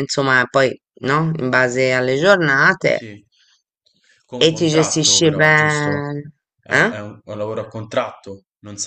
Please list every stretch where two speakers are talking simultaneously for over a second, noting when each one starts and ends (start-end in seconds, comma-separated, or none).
4.4-6.0